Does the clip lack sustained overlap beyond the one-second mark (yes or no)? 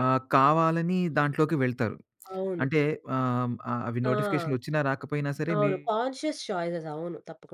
yes